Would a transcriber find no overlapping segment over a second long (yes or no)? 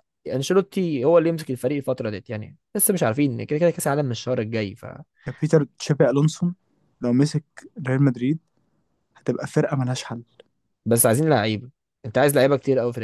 yes